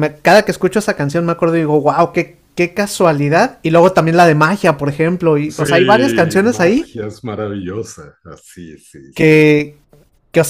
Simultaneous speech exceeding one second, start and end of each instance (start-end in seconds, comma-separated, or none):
5.5-6.8